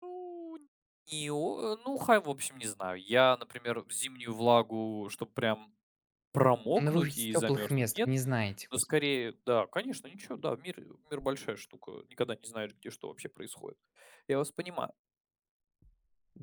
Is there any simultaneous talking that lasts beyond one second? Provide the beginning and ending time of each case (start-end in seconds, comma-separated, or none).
6.8-8.1